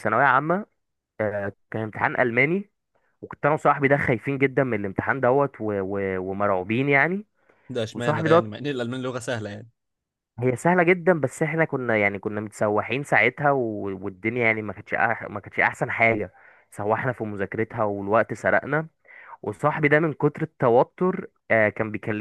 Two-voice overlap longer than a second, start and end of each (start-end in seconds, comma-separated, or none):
none